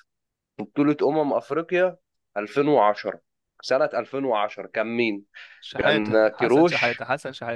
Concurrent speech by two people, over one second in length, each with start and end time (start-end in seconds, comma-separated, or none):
5.8-7.0